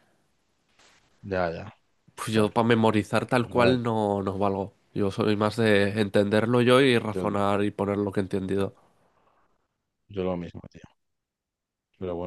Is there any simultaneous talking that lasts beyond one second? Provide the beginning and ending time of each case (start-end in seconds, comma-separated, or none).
none